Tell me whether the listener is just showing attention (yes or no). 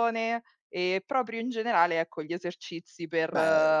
yes